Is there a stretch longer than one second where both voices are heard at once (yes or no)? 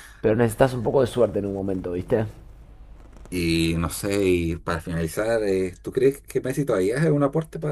no